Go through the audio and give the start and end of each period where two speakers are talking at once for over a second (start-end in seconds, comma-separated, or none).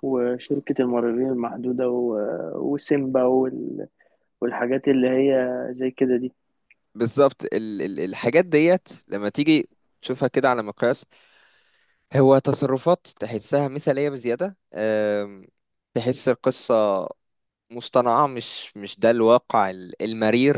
none